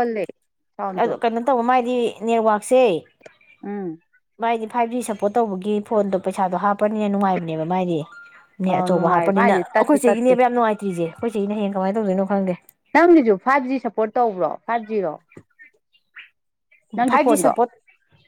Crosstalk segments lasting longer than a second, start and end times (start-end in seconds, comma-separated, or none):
8.7-10.3